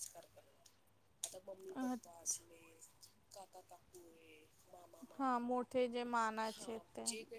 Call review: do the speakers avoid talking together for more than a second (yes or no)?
yes